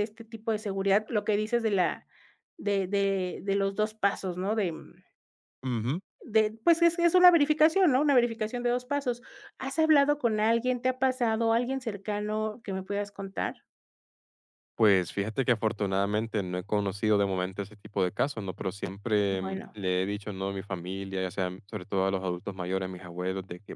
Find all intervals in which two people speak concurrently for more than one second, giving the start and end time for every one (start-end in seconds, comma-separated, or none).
none